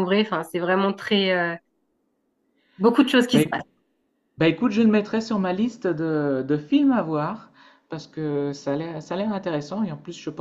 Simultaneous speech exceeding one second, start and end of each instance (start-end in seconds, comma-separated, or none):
none